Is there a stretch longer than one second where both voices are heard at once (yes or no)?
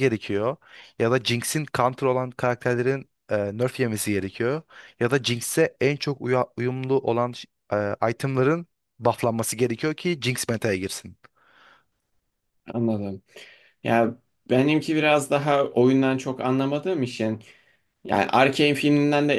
no